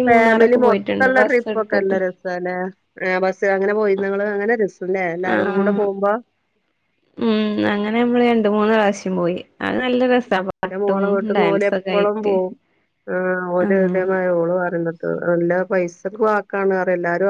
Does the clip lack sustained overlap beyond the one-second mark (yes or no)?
yes